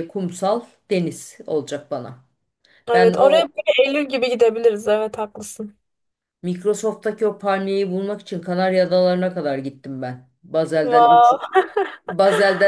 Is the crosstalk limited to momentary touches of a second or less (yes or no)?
yes